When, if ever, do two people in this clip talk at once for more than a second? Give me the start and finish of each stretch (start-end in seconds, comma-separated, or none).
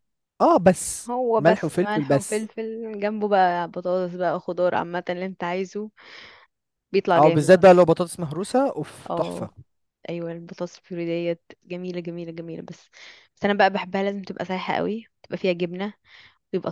1.1-2.5